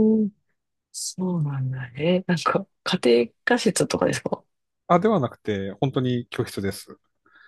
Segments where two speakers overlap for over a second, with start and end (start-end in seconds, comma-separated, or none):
none